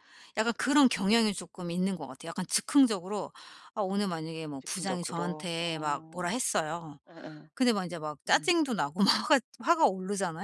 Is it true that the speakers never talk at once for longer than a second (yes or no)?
no